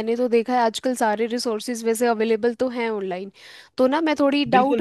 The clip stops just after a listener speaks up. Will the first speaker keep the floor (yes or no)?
no